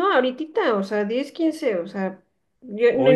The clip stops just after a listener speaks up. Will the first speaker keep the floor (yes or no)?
yes